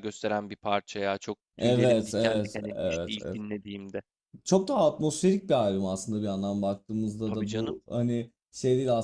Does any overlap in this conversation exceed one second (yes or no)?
yes